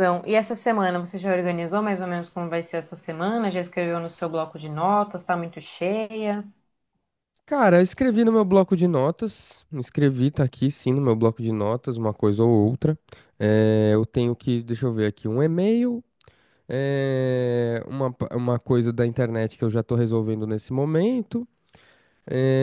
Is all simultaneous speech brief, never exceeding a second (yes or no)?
yes